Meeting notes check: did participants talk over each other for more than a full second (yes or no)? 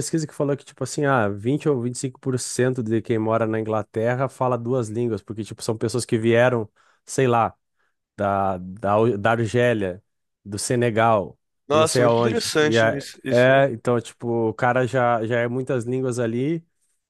yes